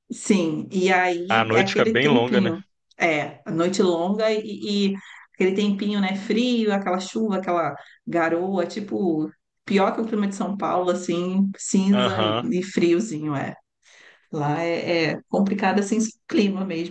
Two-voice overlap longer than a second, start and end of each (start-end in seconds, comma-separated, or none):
1.3-2.5